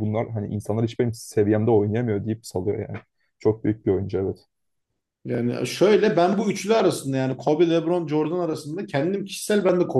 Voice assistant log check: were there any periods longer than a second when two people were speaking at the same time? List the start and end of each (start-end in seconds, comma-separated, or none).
none